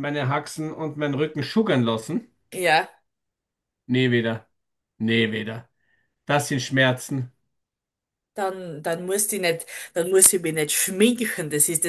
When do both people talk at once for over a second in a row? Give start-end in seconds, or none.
none